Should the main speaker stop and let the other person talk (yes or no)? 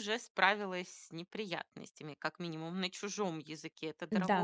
yes